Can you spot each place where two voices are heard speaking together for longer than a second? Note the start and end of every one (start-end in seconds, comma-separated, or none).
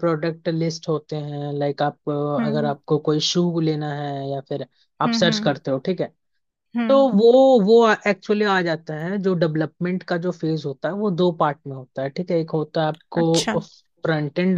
none